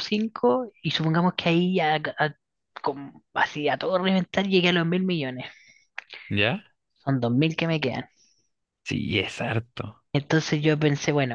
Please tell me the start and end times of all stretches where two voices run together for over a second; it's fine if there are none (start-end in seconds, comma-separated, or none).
none